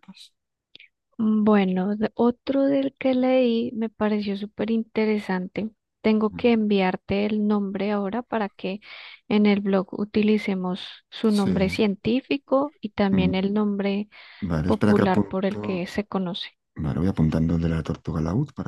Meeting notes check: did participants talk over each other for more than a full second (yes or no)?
yes